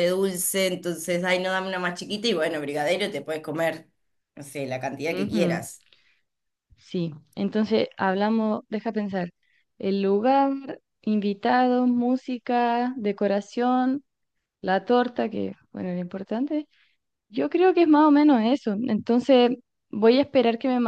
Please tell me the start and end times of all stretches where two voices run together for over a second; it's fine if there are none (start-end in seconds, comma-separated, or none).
none